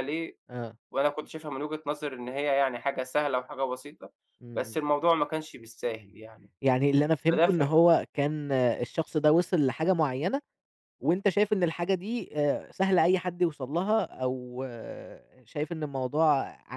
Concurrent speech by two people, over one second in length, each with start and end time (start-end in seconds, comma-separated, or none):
none